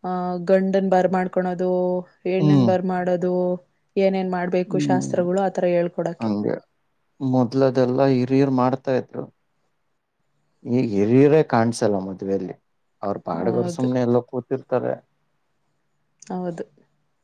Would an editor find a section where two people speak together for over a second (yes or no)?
no